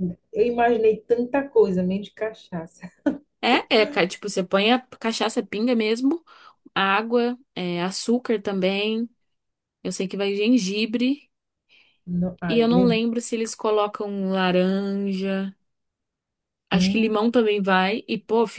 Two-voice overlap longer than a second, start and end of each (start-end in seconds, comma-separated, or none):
none